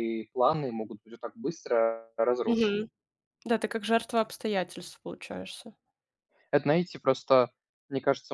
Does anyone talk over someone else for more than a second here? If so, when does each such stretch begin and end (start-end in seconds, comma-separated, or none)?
none